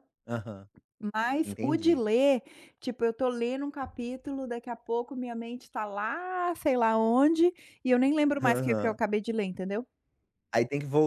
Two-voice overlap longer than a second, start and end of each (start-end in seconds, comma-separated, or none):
none